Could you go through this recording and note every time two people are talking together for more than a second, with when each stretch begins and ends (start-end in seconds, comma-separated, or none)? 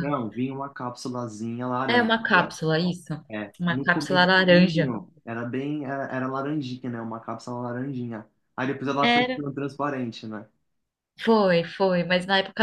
3.6-4.9